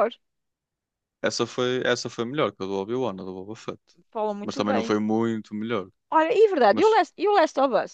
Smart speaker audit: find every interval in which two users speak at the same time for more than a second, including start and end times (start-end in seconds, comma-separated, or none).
none